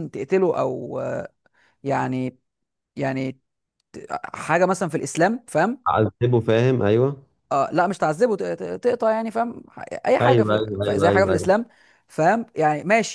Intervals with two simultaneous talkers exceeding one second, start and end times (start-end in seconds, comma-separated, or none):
10.2-11.5